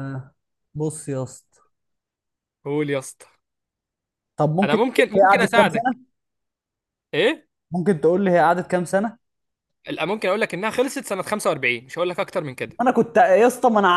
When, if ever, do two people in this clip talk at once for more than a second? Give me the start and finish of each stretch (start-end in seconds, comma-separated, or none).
4.6-5.9